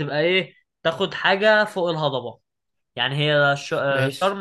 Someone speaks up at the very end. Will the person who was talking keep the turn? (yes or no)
yes